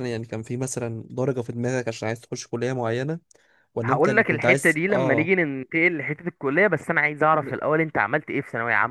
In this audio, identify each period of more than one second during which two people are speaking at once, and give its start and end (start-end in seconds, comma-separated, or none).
3.8-5.3